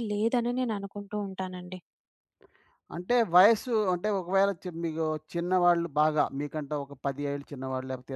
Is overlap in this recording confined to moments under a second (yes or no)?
yes